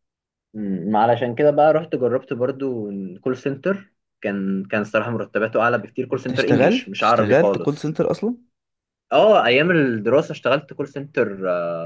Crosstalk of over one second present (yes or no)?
yes